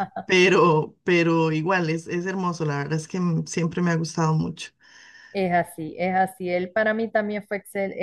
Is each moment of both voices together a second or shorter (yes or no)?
yes